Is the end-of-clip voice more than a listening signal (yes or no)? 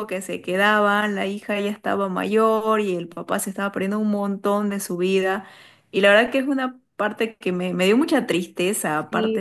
yes